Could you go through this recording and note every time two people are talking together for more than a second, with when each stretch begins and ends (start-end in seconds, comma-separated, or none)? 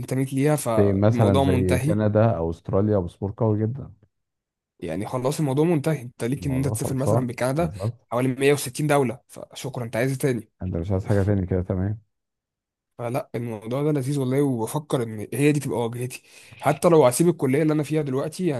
0.8-2.0, 6.3-7.7